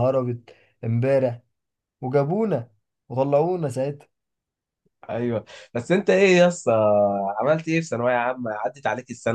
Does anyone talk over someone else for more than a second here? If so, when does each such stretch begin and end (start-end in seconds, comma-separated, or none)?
none